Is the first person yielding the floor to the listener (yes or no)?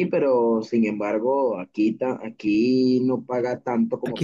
yes